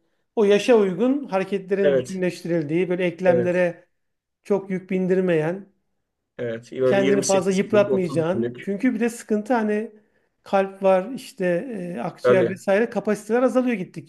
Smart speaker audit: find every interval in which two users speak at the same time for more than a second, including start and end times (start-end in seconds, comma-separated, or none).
6.8-8.7